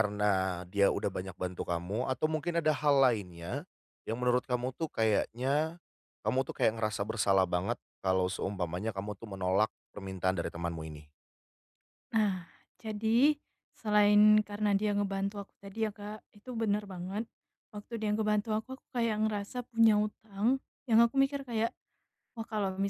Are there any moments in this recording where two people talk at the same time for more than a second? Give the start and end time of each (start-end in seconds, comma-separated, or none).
none